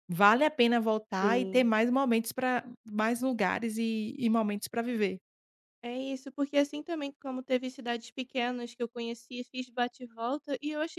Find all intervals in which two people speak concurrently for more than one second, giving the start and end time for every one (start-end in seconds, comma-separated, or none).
none